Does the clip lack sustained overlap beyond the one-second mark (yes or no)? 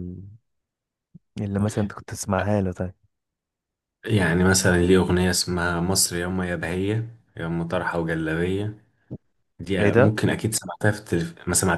yes